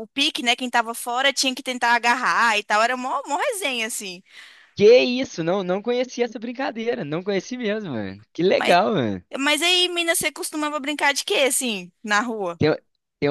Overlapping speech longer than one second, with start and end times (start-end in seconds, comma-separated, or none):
none